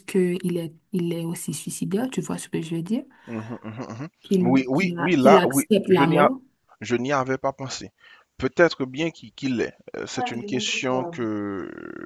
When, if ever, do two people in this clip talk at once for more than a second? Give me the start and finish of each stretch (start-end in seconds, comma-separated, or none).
4.2-6.3